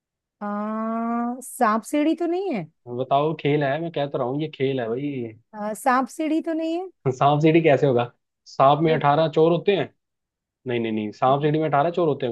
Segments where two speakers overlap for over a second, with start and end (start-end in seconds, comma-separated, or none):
none